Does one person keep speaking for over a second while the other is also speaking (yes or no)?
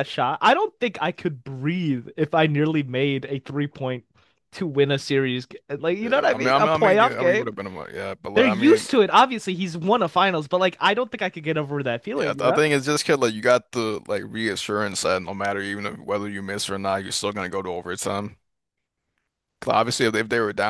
yes